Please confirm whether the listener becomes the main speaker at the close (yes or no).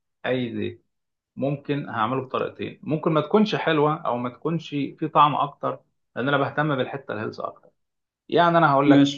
no